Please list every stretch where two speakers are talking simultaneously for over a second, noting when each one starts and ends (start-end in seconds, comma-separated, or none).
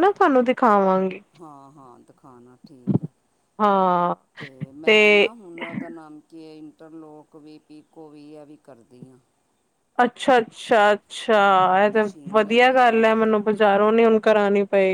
11.4-13.1